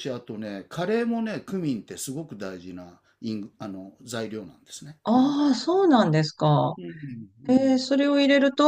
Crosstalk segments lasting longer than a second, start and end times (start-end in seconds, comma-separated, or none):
none